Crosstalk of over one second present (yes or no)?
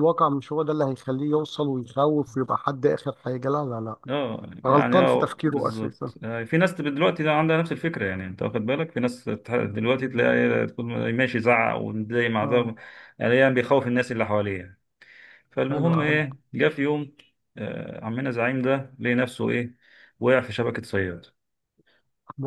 yes